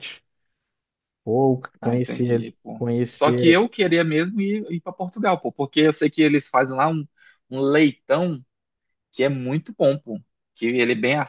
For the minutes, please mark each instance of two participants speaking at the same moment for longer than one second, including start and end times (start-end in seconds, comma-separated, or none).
1.8-3.6